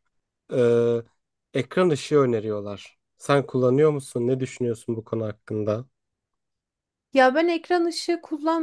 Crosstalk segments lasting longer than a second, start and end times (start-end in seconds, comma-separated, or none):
none